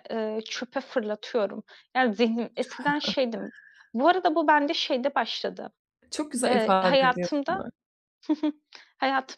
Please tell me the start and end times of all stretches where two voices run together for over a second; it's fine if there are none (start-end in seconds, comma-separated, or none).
6.5-7.7